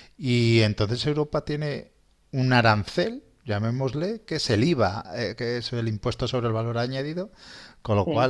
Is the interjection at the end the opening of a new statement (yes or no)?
no